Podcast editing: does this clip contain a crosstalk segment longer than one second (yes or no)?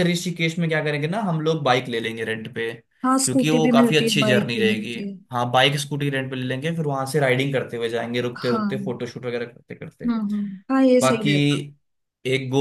yes